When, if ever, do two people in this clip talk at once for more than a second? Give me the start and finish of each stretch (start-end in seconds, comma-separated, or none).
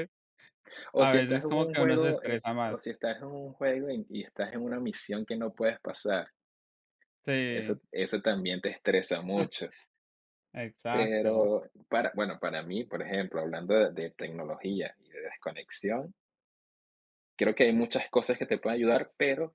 0.9-2.8